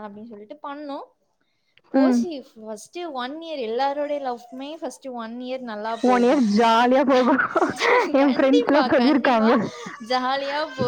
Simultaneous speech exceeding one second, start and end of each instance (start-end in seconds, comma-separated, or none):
8.2-9.5